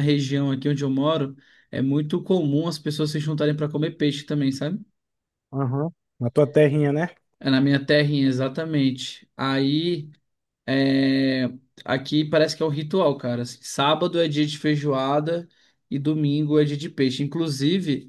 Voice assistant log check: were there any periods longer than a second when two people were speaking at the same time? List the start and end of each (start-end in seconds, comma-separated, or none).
none